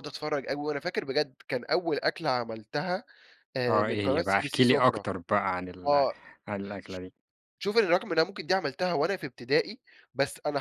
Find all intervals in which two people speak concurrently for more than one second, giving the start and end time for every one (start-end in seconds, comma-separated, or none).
3.7-5.0